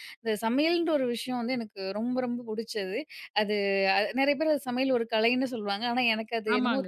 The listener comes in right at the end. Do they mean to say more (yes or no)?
yes